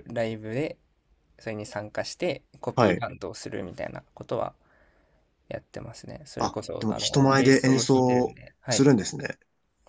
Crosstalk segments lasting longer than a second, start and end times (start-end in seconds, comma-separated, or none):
6.4-8.9